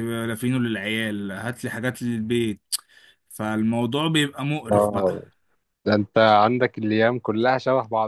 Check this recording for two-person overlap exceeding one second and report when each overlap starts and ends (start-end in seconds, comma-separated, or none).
none